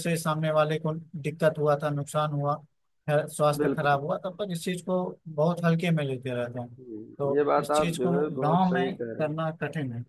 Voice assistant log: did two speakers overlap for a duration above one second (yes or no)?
yes